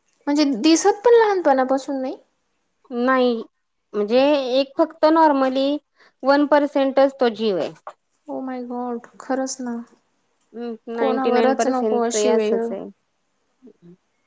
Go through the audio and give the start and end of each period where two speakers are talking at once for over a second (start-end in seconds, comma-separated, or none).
10.9-12.6